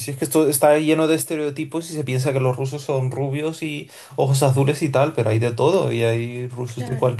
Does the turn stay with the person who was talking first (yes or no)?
yes